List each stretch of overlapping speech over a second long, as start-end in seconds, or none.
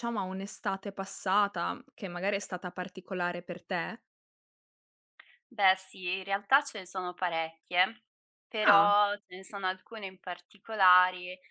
none